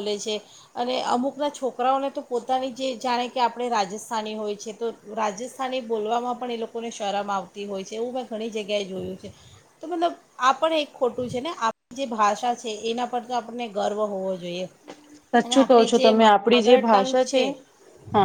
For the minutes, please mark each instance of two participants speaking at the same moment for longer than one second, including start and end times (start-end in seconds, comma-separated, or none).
15.4-17.2